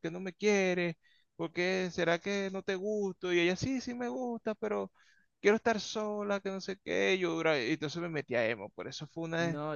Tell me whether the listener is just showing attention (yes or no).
no